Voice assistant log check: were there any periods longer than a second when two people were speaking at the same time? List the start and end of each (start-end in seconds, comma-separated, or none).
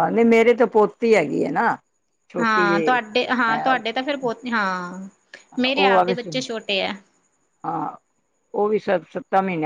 none